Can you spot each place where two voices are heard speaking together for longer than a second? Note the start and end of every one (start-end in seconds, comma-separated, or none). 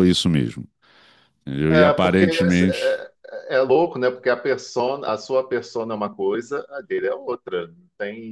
1.7-3.0